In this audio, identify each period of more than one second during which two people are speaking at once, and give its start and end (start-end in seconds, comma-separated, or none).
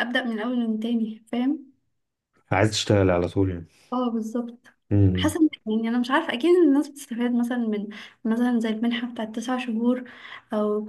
none